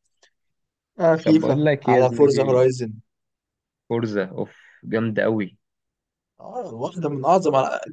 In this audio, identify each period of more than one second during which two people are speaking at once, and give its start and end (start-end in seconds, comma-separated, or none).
1.2-2.6